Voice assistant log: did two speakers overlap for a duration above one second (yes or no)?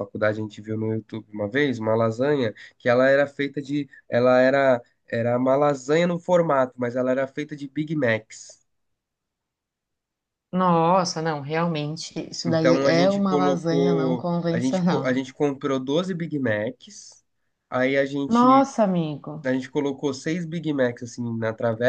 yes